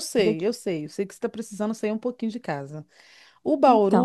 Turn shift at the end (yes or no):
no